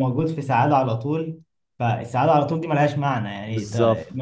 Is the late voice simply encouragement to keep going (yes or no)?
yes